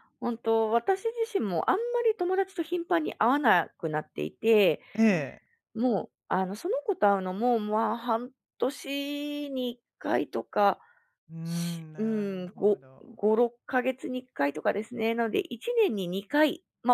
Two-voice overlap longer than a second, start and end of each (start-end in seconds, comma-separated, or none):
11.4-12.8